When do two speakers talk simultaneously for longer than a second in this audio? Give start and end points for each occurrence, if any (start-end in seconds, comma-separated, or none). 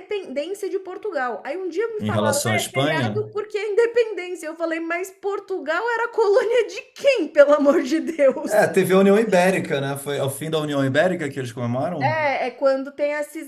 2.0-3.2